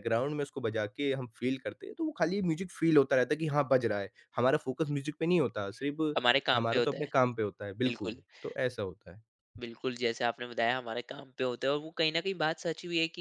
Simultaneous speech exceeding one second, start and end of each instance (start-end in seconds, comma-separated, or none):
none